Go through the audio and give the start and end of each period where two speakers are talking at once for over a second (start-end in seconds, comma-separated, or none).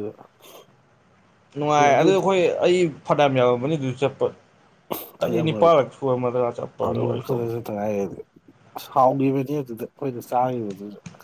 none